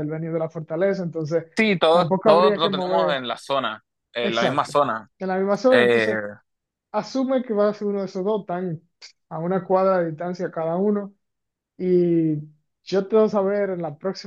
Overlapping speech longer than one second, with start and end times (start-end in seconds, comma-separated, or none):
1.9-3.2